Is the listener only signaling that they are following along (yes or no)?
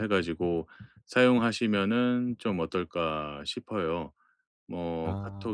yes